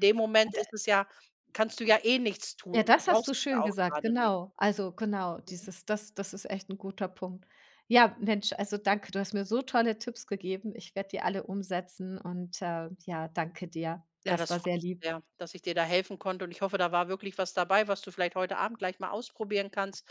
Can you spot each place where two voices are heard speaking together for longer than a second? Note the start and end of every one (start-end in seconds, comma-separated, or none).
2.7-4.3